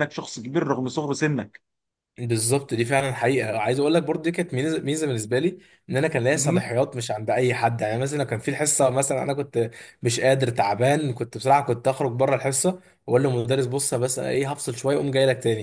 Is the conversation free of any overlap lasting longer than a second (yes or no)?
yes